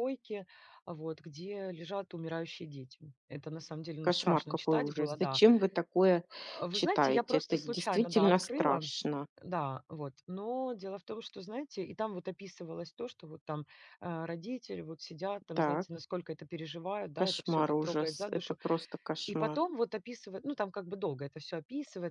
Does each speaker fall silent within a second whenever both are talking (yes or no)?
no